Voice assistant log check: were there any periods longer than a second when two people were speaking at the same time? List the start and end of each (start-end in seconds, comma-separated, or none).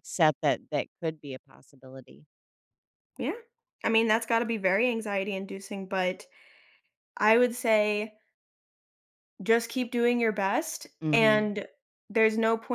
none